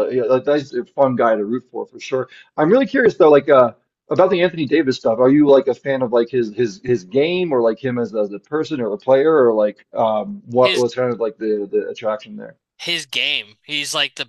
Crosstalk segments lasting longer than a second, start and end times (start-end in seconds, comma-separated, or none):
none